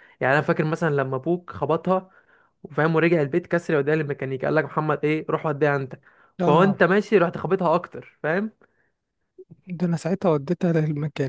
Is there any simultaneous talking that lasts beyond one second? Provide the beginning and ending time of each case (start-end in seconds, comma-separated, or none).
none